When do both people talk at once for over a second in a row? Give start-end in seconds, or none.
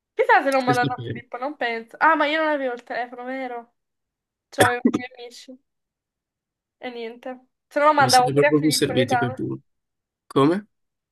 8.0-9.4